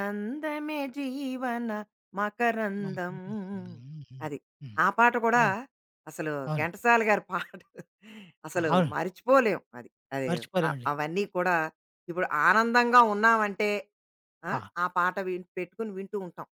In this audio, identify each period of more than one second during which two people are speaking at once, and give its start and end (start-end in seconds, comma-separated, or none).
none